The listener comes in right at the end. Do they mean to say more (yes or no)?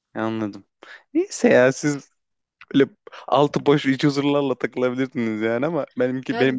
yes